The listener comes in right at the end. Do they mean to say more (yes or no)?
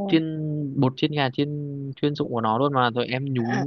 no